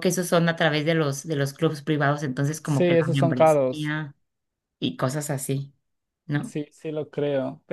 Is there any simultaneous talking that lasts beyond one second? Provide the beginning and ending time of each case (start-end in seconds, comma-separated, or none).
2.6-3.9